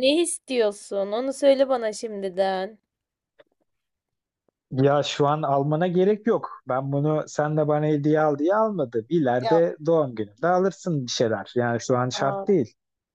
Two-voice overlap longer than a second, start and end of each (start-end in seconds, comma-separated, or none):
none